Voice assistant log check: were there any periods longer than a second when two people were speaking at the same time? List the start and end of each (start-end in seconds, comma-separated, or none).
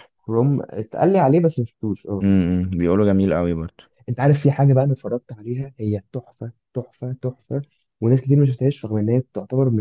none